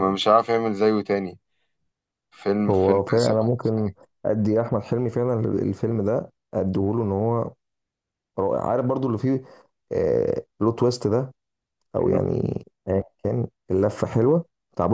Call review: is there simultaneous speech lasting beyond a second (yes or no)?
yes